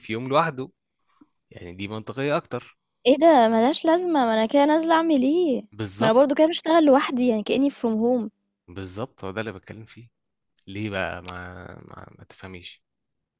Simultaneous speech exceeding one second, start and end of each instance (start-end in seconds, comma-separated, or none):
none